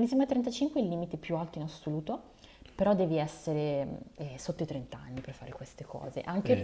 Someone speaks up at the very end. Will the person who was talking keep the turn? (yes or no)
yes